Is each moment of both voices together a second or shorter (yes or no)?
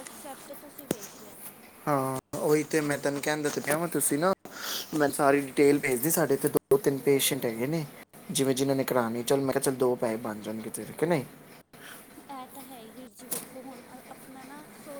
yes